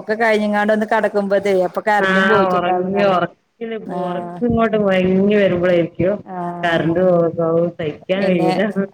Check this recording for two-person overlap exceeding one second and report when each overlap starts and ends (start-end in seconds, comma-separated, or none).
none